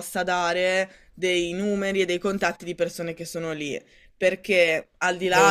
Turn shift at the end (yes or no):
no